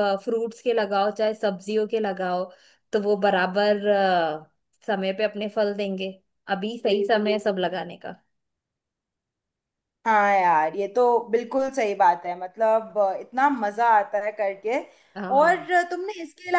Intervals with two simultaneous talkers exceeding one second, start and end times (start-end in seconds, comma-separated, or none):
none